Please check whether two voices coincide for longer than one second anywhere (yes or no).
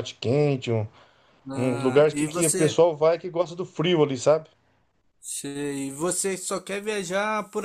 yes